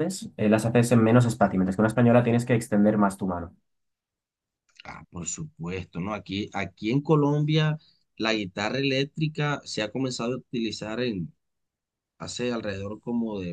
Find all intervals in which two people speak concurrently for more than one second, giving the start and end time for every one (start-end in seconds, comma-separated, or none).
none